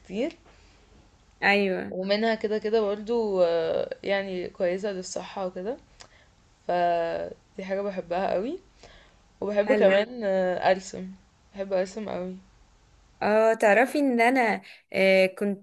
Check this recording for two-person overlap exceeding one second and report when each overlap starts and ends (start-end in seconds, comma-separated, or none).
none